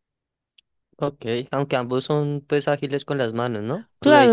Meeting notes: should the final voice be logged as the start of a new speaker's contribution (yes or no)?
yes